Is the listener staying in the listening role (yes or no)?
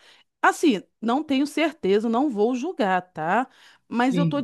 yes